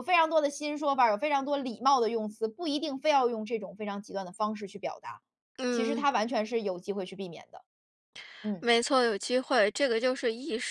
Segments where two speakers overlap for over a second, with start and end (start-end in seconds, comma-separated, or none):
none